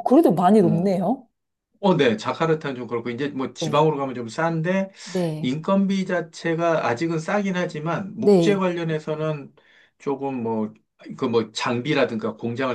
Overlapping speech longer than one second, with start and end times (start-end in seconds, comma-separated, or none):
none